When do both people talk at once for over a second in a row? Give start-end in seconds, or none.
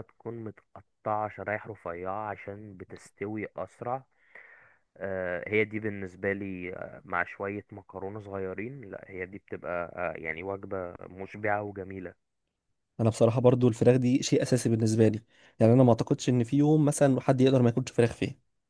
none